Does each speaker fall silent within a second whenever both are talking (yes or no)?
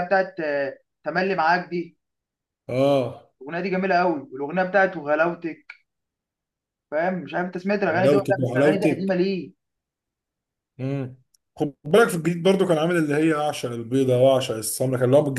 no